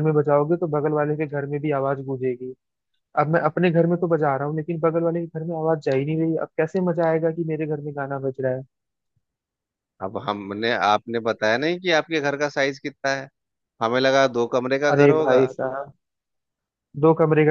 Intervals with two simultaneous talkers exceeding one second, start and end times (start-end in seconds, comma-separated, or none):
none